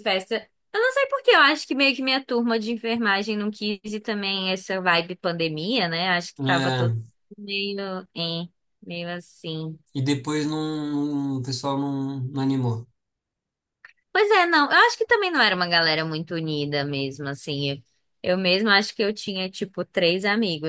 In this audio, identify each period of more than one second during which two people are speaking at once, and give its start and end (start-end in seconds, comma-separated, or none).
none